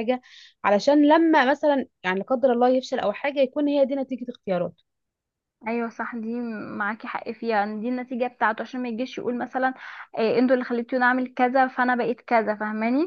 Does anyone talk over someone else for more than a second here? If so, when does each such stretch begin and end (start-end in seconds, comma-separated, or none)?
none